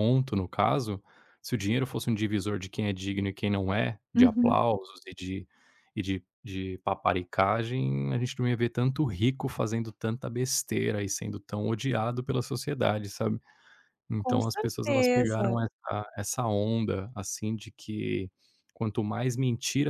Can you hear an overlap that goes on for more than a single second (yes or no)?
yes